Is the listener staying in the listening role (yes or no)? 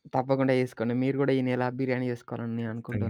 no